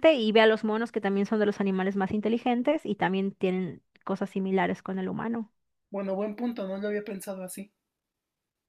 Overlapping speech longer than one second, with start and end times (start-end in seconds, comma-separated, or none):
none